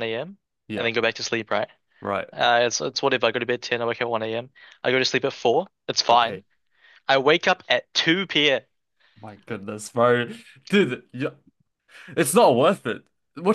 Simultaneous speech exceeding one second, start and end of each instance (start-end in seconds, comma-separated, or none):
none